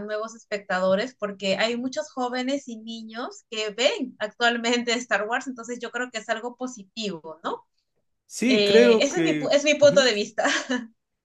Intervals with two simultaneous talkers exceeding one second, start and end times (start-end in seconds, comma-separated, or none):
8.5-10.0